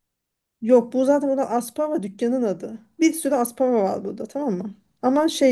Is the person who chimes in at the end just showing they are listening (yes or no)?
yes